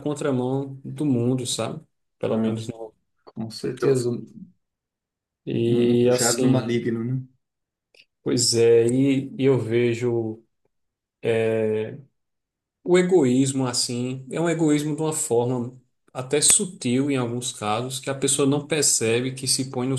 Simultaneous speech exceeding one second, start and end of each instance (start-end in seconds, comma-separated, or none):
5.5-6.8